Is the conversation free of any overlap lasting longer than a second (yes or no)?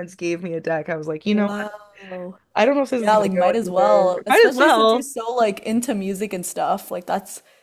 no